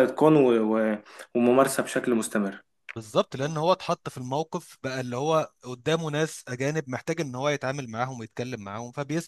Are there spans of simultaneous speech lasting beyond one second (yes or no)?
no